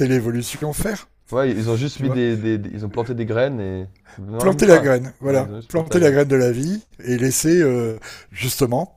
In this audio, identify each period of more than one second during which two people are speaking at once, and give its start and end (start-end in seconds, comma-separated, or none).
4.4-6.2